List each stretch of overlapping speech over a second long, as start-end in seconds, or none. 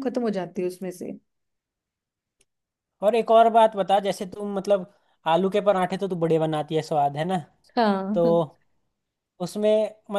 none